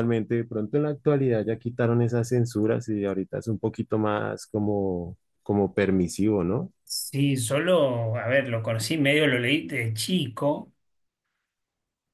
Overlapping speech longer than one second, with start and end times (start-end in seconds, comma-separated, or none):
none